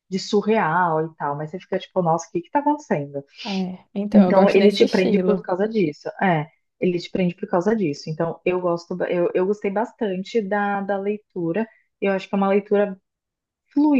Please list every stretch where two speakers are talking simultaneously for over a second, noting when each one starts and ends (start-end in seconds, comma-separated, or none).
4.1-5.5